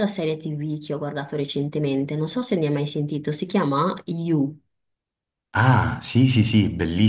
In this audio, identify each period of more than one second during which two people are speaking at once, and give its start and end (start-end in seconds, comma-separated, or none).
none